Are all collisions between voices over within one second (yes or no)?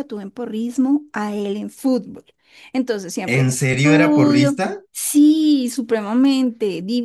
no